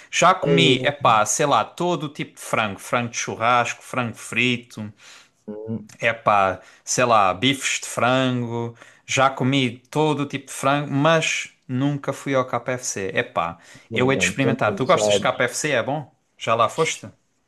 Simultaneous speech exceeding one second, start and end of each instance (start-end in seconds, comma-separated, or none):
13.9-15.4